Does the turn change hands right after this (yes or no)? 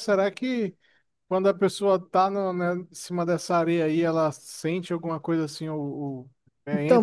yes